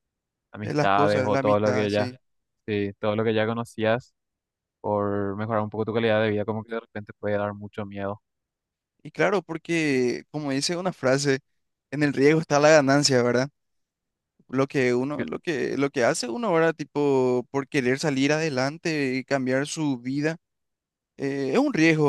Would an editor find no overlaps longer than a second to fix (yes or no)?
no